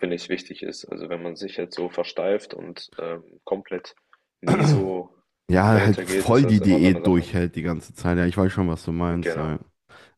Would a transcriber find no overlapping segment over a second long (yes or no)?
no